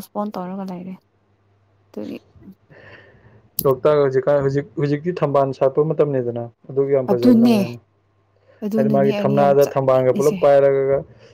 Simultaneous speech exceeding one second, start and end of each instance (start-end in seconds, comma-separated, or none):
8.8-10.4